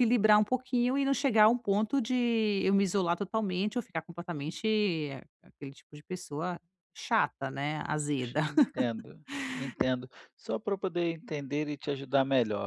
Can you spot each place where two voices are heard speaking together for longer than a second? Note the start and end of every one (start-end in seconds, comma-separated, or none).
none